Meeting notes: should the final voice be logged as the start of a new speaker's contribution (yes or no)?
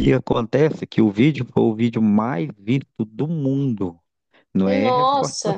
no